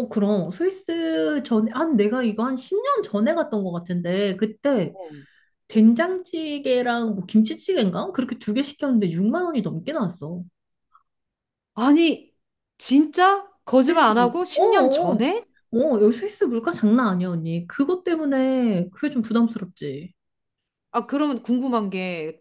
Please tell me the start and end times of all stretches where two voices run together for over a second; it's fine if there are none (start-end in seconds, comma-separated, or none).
13.8-15.2